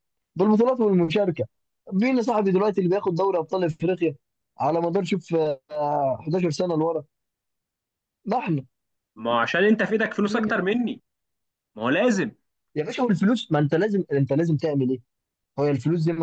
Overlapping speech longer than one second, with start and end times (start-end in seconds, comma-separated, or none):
none